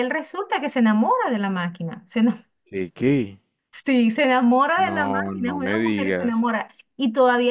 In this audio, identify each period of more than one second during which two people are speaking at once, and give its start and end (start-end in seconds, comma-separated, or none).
4.9-6.5